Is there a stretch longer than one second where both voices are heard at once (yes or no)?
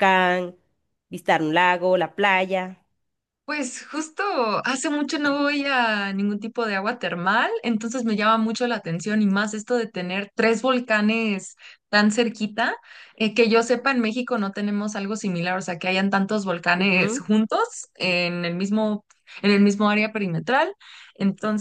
no